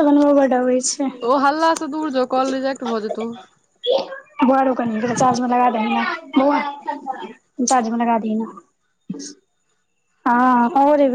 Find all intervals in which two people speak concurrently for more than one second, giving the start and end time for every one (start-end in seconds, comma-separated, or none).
none